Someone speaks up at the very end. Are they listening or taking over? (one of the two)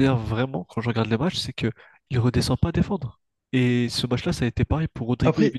listening